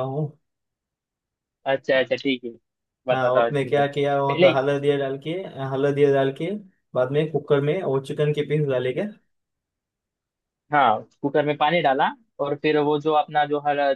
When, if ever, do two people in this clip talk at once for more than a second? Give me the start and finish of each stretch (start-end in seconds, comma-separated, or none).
3.1-4.5